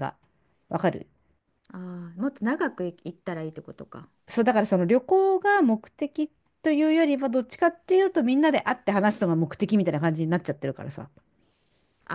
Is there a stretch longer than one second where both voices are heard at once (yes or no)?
no